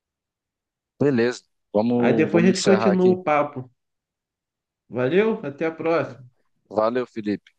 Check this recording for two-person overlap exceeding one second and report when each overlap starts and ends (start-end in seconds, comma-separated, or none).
2.0-3.2